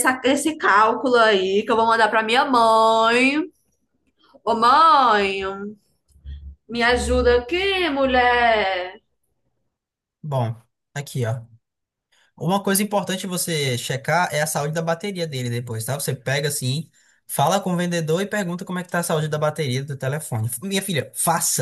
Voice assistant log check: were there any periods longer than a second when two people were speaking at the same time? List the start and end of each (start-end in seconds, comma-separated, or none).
none